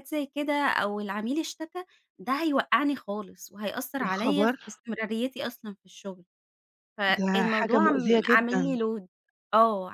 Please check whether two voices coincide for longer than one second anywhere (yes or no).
yes